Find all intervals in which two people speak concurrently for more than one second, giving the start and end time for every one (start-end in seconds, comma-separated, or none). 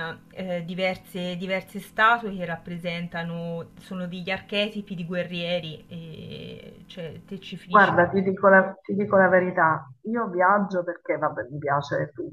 none